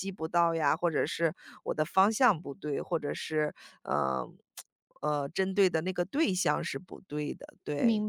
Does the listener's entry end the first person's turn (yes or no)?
yes